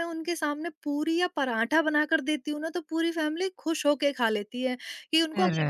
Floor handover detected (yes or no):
no